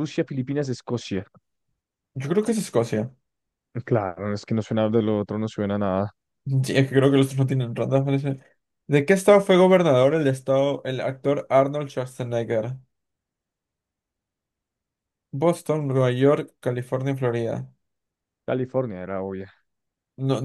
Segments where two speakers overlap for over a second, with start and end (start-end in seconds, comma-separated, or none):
none